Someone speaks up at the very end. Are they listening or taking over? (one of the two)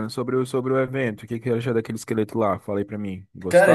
listening